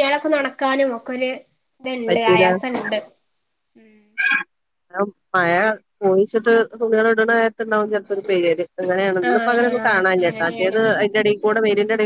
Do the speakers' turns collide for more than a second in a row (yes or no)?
yes